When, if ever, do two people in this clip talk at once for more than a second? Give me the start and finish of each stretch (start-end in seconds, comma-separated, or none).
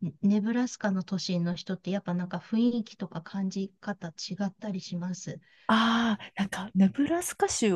none